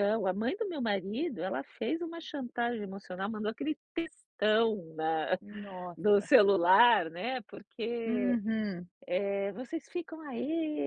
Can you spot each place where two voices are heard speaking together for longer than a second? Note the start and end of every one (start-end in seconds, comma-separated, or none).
none